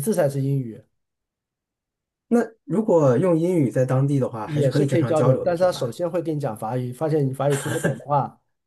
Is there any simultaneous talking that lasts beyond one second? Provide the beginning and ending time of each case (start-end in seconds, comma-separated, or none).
4.4-6.0